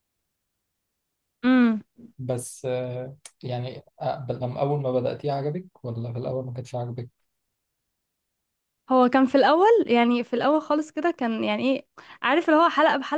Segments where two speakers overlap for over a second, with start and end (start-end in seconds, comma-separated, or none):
none